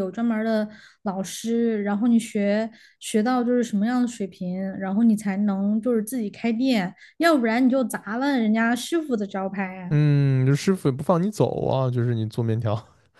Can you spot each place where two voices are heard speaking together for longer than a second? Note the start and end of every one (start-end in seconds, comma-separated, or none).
none